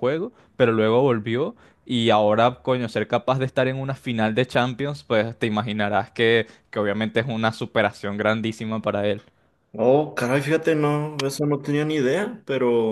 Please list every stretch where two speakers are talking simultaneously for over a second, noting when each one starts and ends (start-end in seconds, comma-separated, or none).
none